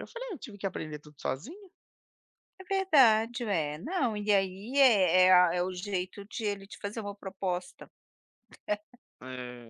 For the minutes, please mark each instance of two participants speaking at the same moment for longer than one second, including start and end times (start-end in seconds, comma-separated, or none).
none